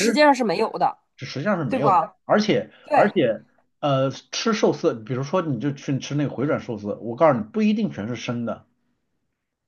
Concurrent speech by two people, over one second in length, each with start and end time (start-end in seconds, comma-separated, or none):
none